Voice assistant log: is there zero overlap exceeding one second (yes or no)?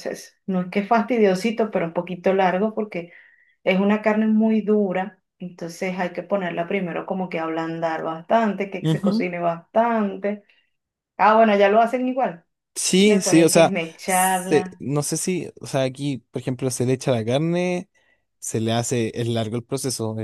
no